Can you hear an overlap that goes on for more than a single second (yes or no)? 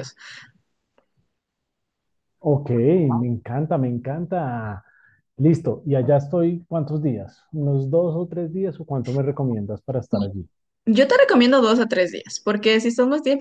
no